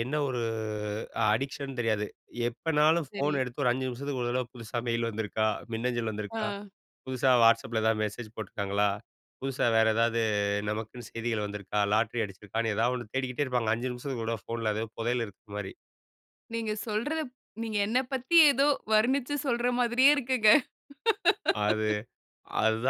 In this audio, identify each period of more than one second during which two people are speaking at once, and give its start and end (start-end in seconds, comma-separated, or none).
none